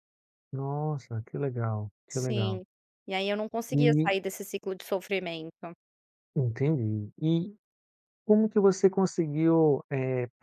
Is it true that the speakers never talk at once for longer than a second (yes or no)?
yes